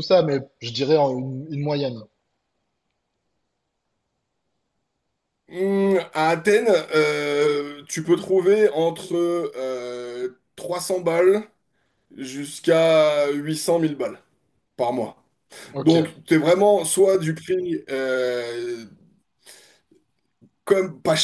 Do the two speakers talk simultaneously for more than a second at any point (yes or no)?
no